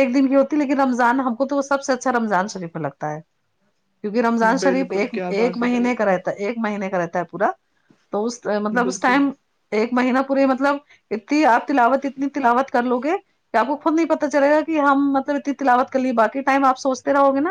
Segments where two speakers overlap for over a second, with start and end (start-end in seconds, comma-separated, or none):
4.6-6.3